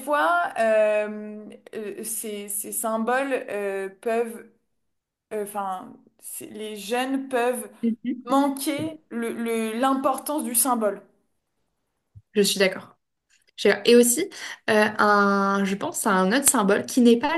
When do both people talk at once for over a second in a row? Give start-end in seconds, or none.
none